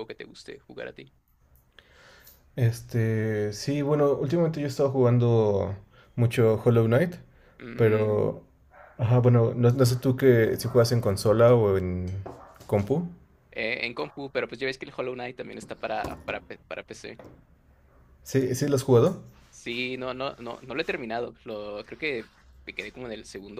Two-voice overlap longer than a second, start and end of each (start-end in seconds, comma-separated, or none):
none